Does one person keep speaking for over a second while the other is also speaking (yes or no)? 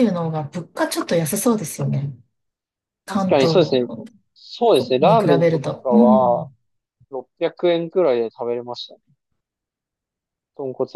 yes